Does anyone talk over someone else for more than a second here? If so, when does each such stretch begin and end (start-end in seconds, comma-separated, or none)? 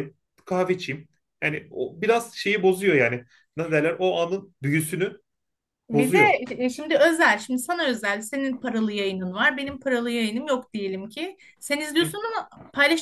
none